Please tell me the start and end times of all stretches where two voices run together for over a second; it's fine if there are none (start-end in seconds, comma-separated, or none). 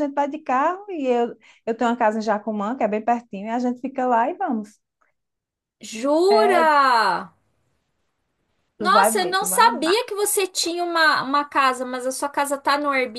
8.8-10.0